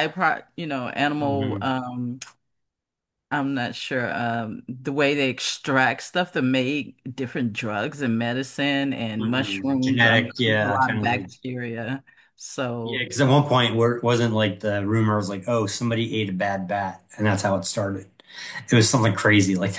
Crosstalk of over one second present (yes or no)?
yes